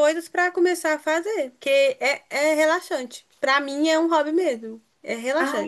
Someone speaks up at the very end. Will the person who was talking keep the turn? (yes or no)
no